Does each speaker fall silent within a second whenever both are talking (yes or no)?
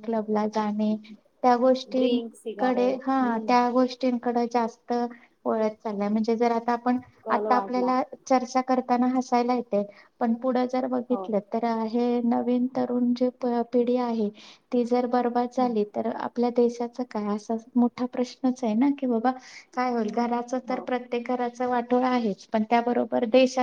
no